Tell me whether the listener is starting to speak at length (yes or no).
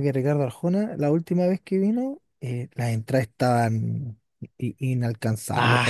yes